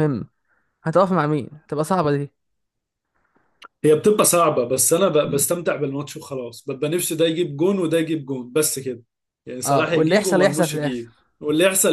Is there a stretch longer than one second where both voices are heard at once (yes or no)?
yes